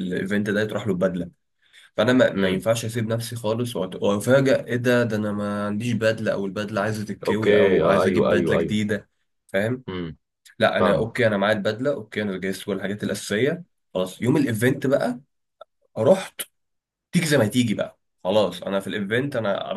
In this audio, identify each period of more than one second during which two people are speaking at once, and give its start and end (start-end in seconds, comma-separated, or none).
7.3-8.8